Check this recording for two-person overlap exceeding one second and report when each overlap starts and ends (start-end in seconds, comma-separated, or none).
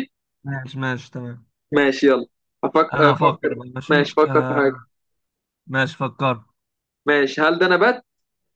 2.9-4.7